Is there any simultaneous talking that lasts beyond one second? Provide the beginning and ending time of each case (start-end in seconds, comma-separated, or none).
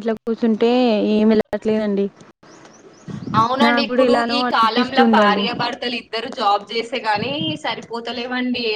3.6-5.4